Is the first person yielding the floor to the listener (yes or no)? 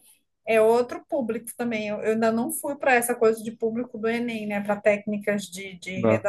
no